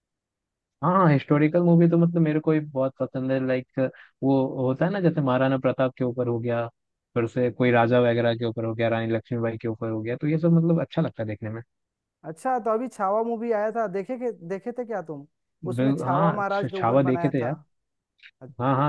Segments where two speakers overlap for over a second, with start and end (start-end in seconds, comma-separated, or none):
15.8-17.5